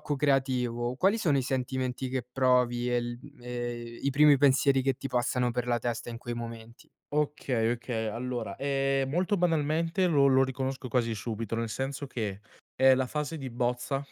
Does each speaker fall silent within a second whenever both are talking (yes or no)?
yes